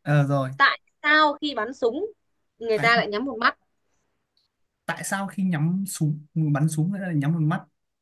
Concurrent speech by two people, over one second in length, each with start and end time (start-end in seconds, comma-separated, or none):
none